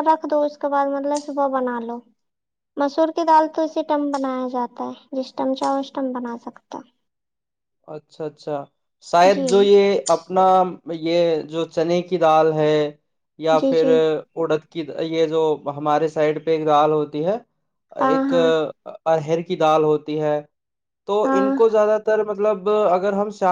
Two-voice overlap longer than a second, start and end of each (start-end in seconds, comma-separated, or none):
none